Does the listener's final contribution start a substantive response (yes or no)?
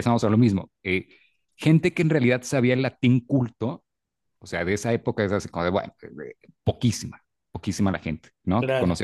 no